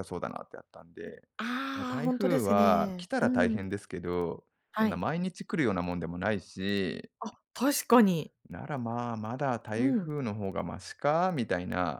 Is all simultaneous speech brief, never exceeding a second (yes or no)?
no